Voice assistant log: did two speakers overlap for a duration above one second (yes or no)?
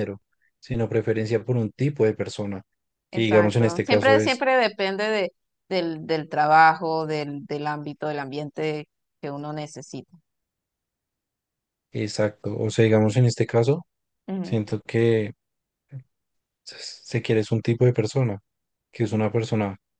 yes